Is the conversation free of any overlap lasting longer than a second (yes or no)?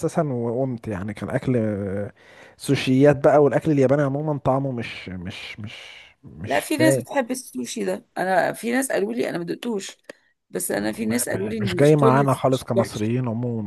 no